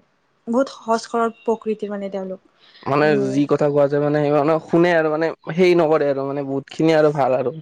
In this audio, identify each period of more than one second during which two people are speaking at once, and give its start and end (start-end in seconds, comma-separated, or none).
none